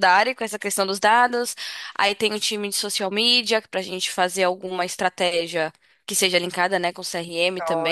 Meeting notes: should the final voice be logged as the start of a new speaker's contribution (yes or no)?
yes